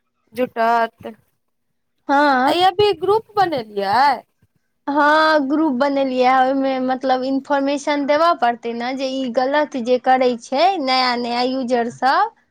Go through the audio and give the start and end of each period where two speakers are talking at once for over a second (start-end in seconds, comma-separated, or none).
none